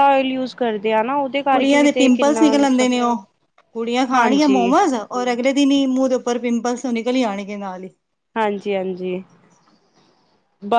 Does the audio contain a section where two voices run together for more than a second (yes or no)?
yes